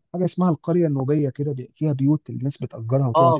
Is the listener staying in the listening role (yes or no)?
no